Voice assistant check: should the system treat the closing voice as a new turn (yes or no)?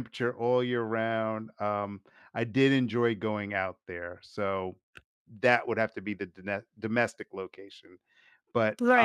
yes